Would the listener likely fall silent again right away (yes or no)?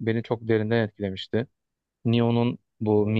yes